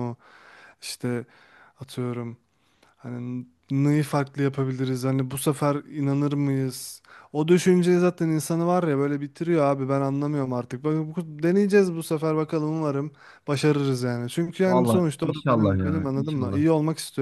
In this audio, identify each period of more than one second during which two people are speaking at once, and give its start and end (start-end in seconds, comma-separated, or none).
14.7-16.6